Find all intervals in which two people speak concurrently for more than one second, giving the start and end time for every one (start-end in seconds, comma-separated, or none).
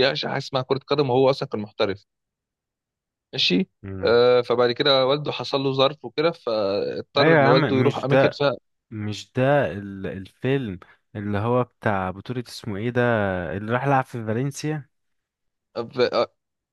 7.2-8.4